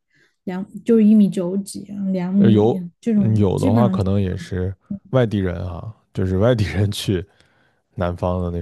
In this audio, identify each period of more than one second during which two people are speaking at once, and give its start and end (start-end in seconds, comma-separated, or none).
2.4-4.0